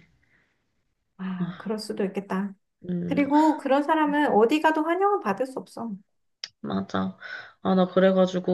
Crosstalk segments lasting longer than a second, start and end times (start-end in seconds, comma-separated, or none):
none